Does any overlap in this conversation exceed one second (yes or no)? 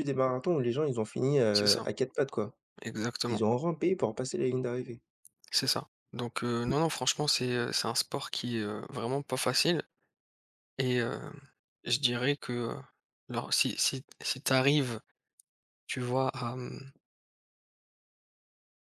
no